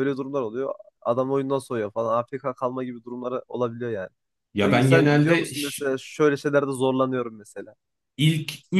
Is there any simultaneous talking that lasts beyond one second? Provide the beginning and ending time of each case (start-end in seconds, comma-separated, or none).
4.6-5.8